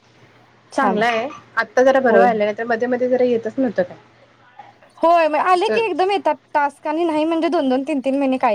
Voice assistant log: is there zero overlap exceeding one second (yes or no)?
yes